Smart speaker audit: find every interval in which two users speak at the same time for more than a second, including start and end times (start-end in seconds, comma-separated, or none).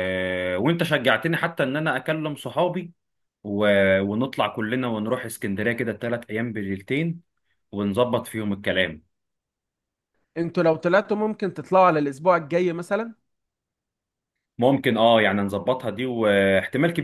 none